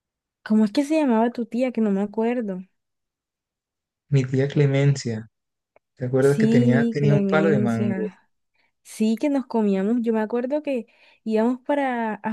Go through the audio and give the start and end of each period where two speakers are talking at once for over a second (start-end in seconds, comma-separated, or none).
6.2-8.1